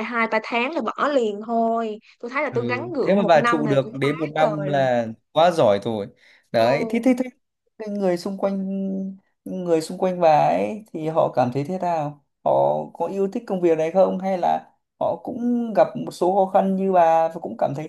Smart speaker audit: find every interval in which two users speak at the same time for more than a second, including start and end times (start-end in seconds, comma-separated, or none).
2.5-4.8